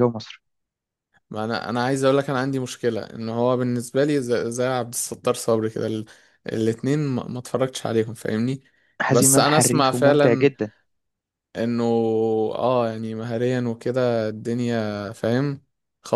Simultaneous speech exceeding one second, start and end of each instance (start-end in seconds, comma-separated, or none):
9.1-10.5